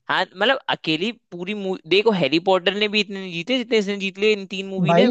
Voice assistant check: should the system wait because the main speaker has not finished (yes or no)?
no